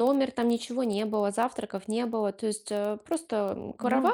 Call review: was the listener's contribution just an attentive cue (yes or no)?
yes